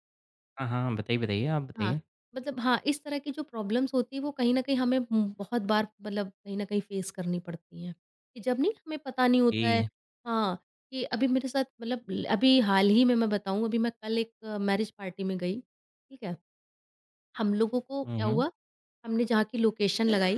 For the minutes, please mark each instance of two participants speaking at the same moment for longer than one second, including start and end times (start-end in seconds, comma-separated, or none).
none